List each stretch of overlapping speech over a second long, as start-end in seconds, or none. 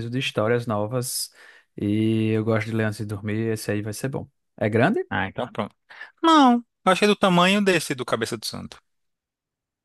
none